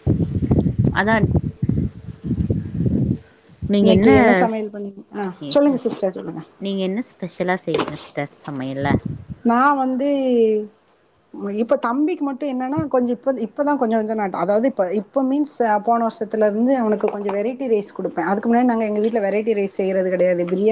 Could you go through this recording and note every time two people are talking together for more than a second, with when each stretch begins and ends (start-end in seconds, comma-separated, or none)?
none